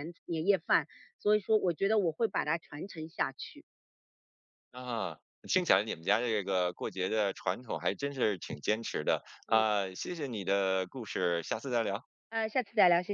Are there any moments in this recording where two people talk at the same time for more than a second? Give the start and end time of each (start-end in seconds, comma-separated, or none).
none